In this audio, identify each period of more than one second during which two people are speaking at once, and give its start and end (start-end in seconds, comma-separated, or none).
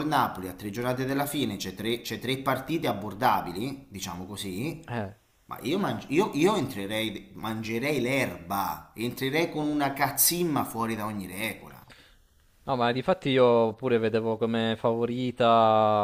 none